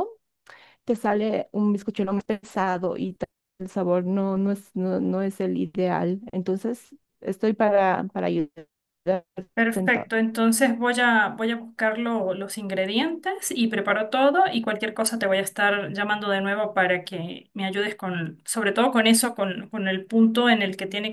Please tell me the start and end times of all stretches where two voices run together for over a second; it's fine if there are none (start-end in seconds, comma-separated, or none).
none